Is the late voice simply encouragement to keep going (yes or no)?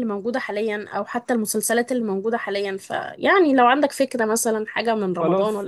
no